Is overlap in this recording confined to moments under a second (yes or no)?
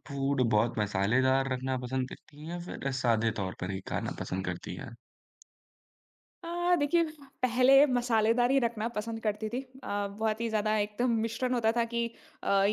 yes